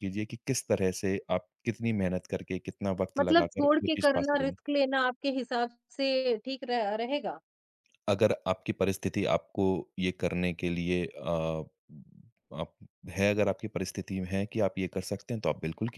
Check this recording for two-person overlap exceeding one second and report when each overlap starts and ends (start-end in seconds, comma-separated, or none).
3.2-4.5